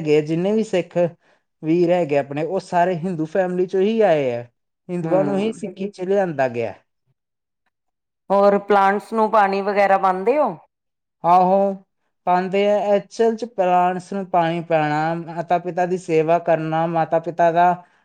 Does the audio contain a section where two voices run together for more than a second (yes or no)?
no